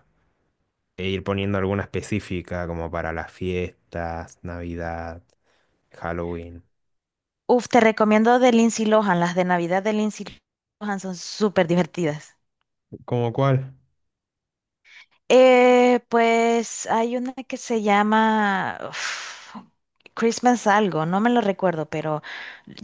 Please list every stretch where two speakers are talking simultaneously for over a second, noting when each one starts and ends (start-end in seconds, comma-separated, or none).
none